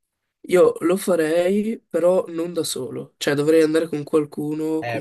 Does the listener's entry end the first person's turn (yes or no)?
yes